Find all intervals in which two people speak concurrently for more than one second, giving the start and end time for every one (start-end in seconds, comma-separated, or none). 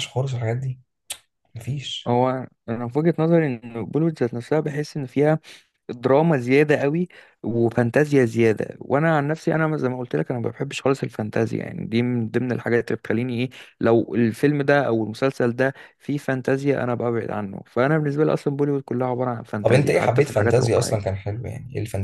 19.6-21.2